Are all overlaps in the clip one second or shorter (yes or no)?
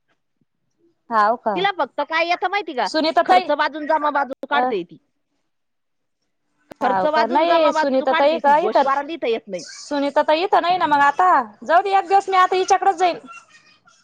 no